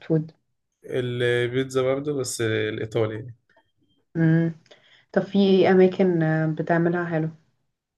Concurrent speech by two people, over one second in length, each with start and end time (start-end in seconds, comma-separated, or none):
none